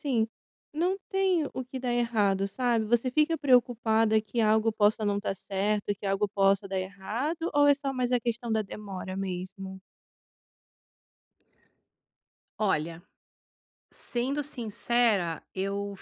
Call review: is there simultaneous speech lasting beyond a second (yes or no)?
no